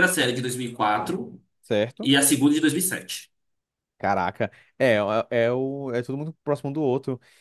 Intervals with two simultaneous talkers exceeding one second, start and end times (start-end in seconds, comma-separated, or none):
none